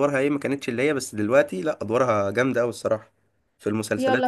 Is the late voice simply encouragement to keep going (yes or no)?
no